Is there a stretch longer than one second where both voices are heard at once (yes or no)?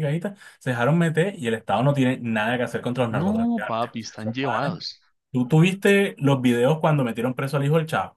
yes